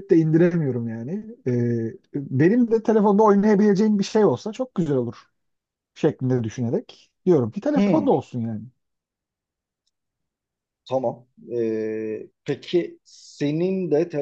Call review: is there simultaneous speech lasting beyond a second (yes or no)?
no